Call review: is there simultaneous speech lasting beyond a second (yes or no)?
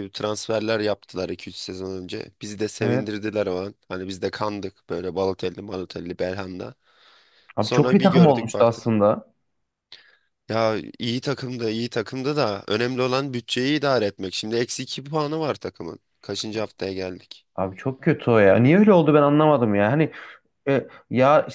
yes